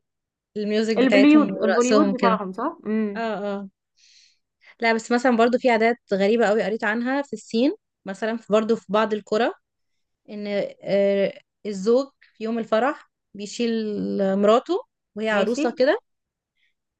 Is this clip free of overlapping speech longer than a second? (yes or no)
no